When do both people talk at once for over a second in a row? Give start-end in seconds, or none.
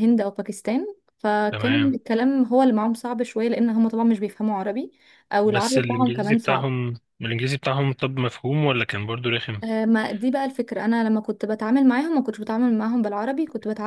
5.5-6.7